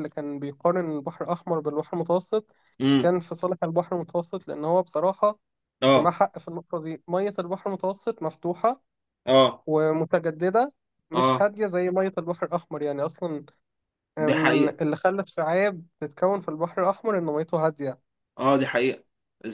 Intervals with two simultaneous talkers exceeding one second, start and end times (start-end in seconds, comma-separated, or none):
none